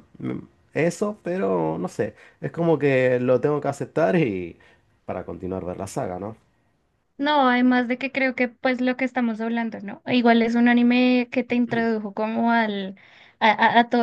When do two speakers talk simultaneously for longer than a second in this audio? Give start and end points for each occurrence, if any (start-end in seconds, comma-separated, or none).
none